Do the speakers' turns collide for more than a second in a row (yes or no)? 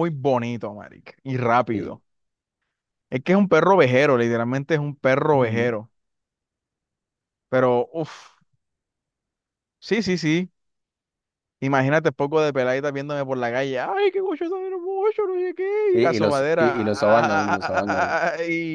yes